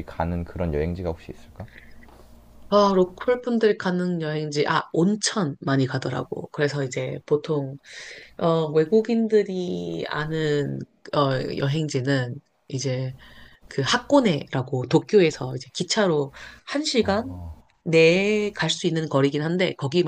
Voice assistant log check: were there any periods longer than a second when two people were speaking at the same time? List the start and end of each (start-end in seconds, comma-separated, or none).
none